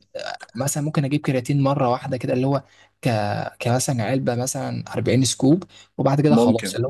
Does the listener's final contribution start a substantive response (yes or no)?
no